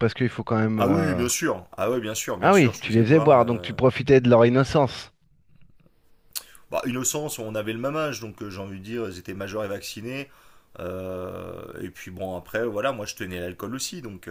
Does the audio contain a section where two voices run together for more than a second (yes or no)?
yes